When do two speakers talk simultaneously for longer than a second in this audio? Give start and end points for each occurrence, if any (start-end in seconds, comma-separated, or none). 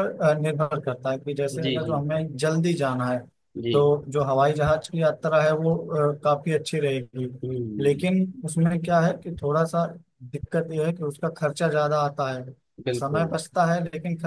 none